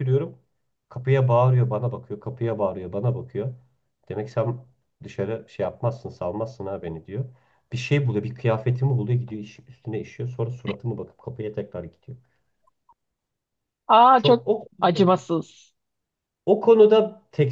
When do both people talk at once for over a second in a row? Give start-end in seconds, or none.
none